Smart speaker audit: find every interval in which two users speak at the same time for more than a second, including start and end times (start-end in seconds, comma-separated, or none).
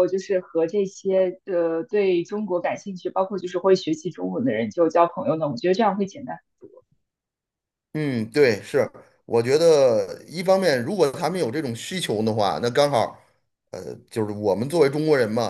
none